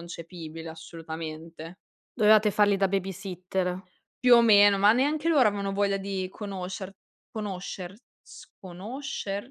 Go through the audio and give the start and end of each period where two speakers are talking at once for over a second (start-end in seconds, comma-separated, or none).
none